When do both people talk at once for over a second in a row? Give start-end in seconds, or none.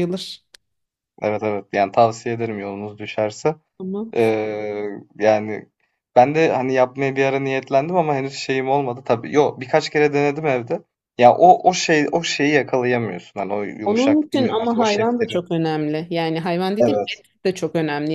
13.8-15.4